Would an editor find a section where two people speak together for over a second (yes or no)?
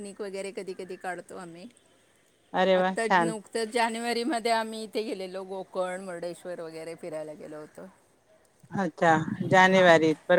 no